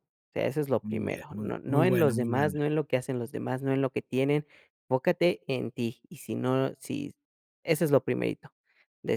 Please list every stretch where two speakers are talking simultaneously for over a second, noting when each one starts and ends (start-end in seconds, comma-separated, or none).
0.8-2.6